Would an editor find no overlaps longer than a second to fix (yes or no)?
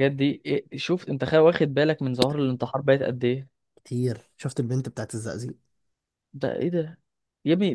yes